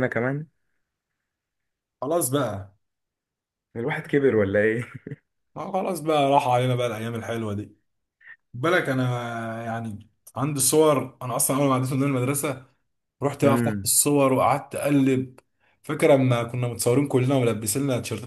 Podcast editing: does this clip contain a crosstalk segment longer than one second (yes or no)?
no